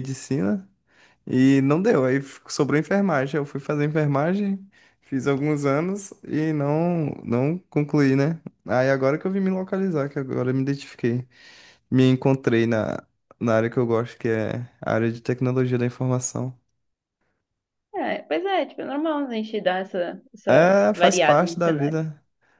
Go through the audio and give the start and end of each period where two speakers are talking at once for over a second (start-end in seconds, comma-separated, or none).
20.5-22.0